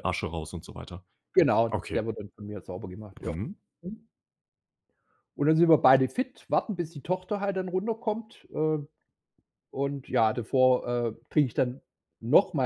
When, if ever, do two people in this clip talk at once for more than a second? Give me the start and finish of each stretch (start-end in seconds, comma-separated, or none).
none